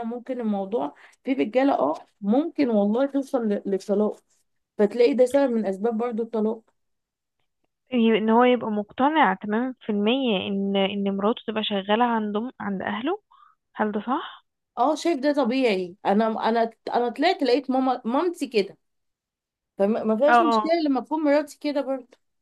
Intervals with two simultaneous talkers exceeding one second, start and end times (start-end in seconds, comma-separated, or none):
none